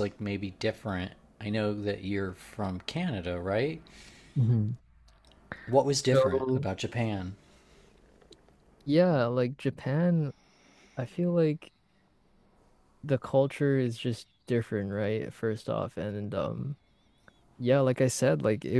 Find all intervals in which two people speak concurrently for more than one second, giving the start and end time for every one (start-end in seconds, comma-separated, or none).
none